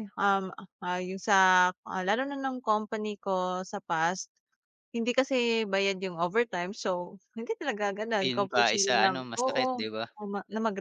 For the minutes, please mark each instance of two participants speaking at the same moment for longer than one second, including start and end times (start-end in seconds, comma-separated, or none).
8.2-9.8